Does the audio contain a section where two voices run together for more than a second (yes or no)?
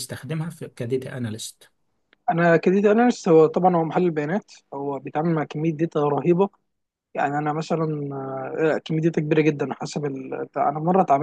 no